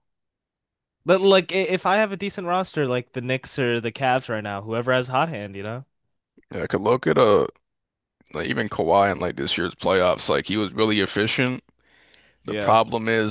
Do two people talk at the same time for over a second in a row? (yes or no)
no